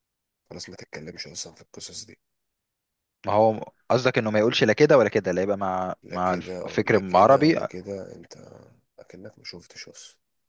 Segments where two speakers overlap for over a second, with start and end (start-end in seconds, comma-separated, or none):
6.0-7.6